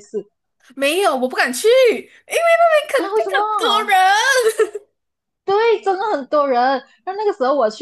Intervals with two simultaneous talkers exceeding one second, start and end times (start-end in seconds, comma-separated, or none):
none